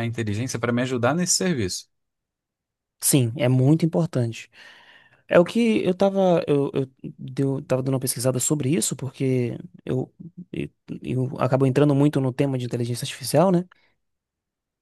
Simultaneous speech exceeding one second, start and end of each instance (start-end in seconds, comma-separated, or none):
none